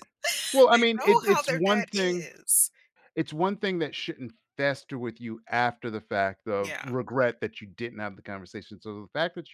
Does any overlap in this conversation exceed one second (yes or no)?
yes